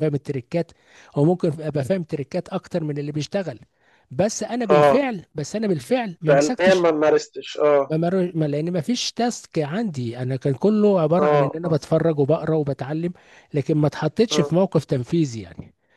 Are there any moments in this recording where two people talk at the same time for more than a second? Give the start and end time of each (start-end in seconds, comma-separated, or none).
none